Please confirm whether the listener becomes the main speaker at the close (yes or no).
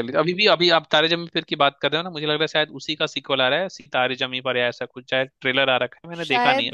yes